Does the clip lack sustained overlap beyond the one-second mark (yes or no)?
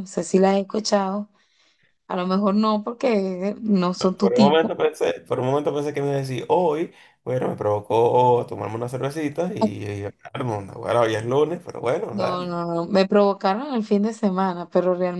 yes